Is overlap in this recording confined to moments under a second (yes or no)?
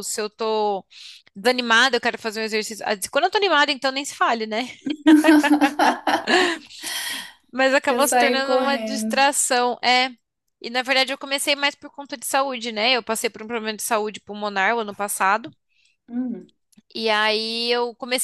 no